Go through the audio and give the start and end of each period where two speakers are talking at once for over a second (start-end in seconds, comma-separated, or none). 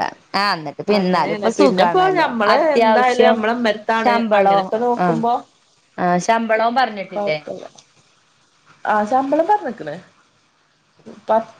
0.9-3.4